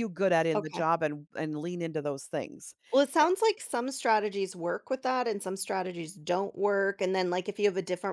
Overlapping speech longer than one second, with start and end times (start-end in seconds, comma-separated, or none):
none